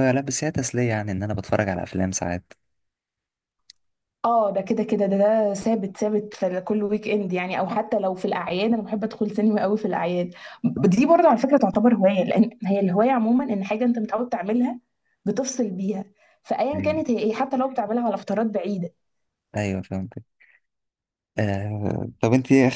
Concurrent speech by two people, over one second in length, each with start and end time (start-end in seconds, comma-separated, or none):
none